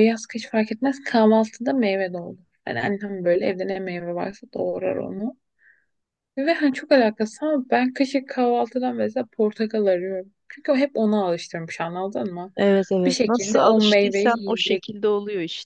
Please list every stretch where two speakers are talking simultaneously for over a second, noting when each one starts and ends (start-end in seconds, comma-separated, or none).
13.1-14.8